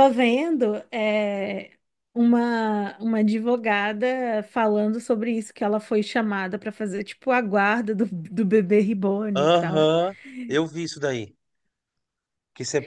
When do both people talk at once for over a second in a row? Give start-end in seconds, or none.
none